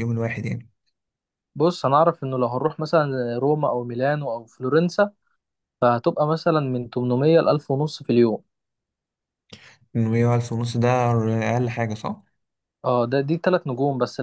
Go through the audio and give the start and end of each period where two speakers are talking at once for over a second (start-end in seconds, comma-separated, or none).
none